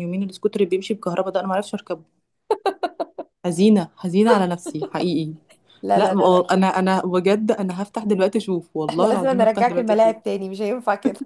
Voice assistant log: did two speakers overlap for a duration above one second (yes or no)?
yes